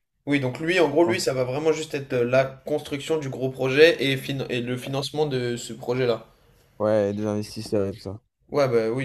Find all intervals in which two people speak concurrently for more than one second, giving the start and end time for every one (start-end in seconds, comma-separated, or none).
none